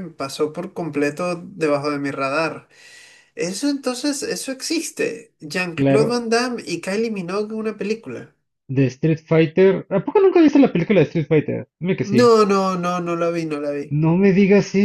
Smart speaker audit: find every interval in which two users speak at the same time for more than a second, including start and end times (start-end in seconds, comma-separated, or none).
none